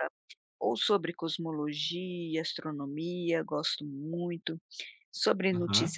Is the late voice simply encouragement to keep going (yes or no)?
yes